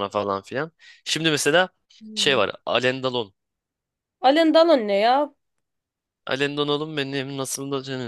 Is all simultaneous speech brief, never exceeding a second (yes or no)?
yes